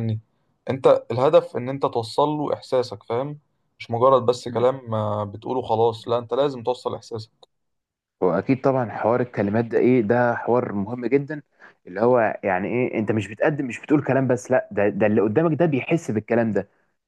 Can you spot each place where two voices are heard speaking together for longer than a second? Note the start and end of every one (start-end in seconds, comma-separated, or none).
none